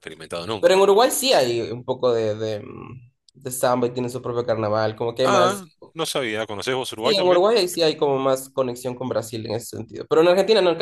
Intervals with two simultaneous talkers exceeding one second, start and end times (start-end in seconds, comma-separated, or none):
none